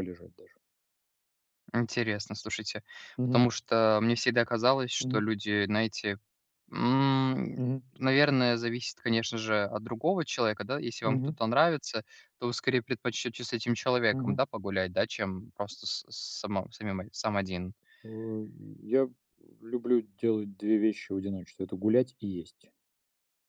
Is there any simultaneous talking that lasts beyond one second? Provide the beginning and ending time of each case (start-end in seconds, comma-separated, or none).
none